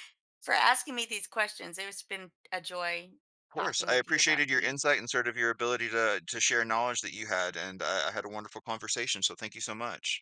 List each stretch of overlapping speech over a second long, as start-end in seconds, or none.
3.5-4.8